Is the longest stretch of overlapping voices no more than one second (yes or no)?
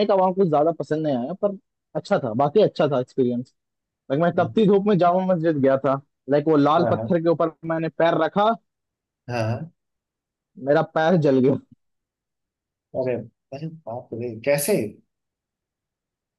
yes